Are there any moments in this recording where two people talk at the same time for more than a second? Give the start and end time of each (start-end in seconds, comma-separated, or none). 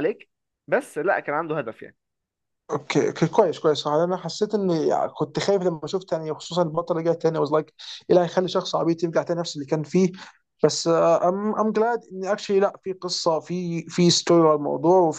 none